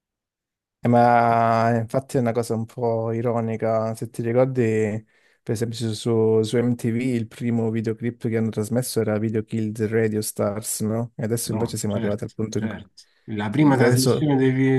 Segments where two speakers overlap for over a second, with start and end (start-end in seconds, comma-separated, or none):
11.4-12.8